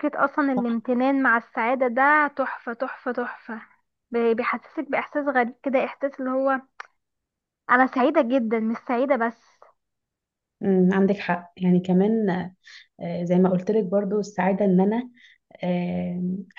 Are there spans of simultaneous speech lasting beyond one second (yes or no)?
no